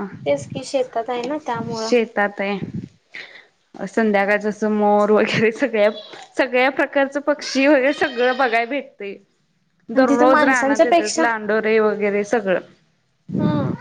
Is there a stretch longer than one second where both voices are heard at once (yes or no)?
yes